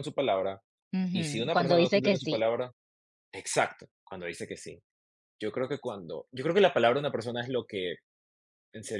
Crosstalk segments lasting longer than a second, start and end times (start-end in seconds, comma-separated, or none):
1.1-2.5